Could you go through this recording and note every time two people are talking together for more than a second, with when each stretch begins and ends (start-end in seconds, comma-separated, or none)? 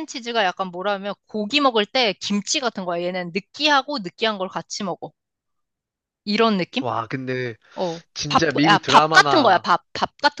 8.1-9.7